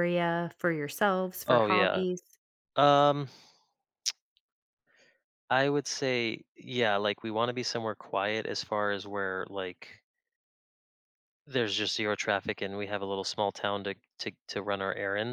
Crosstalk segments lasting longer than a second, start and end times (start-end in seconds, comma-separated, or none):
none